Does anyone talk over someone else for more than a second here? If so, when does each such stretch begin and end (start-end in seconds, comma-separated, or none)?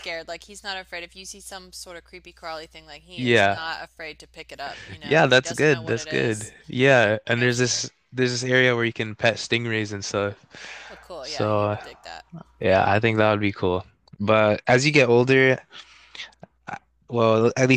5.0-6.5